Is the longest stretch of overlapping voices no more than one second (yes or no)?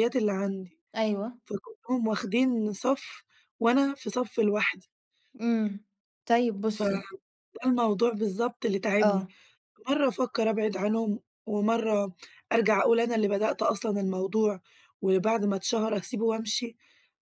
yes